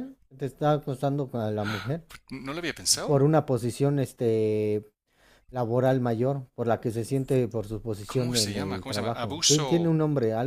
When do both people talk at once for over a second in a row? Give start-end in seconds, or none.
8.1-9.9